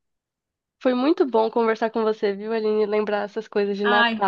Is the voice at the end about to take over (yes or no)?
no